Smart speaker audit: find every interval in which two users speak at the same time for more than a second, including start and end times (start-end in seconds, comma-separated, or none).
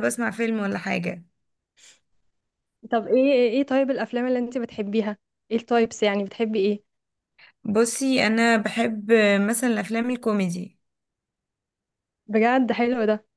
none